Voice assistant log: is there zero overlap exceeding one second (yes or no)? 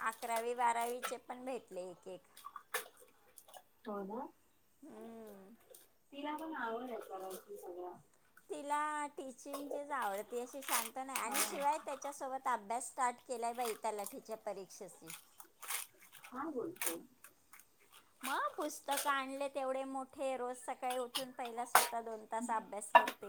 yes